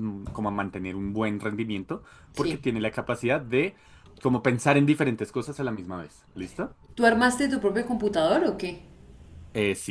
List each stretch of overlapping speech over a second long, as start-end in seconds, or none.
none